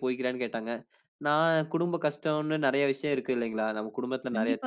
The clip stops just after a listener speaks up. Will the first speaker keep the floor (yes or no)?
no